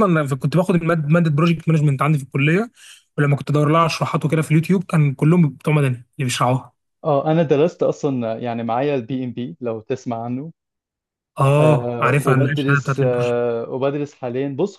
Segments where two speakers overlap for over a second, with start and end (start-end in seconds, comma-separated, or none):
11.6-13.0